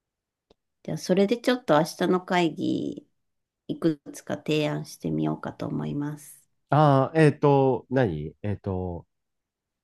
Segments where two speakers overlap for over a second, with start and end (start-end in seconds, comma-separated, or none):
none